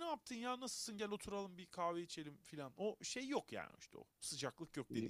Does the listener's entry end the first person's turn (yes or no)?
yes